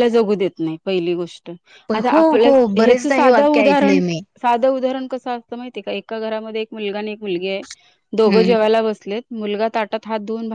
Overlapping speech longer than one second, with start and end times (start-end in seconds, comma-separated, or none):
1.9-4.0